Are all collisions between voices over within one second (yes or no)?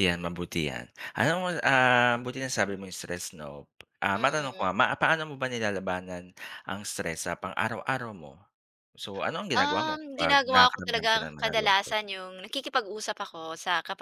no